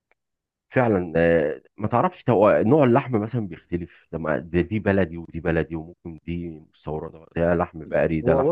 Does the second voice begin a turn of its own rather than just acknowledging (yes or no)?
yes